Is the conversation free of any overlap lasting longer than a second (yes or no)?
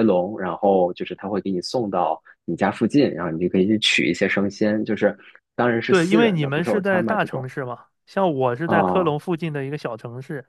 no